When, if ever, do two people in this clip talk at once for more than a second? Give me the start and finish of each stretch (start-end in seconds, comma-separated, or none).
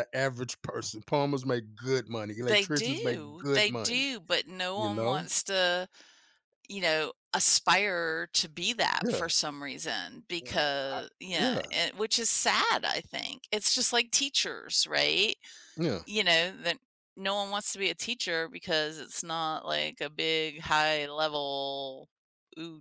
2.4-4.1